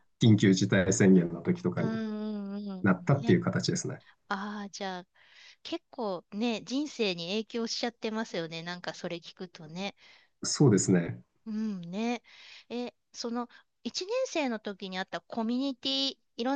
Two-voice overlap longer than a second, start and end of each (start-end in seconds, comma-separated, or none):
none